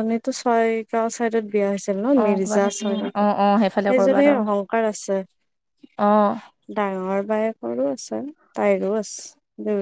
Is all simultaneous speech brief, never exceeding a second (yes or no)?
no